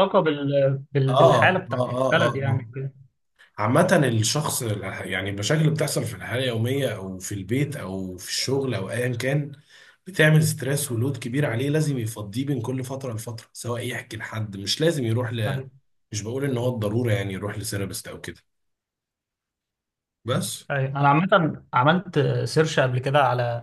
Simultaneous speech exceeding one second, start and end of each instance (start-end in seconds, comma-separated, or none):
1.1-2.7